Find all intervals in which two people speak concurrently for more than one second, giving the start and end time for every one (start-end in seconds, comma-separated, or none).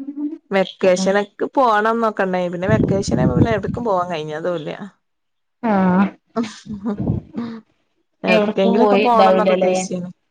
8.4-9.8